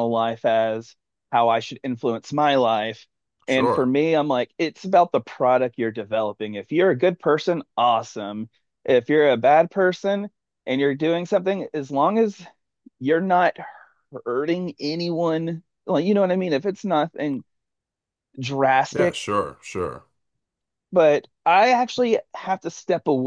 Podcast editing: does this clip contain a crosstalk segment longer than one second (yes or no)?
no